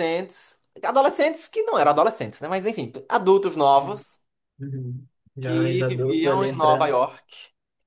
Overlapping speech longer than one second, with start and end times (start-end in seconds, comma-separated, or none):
5.4-7.0